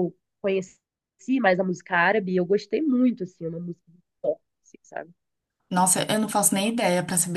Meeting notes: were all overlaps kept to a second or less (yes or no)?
yes